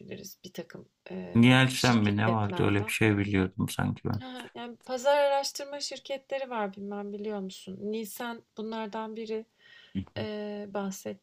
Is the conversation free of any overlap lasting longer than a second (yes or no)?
no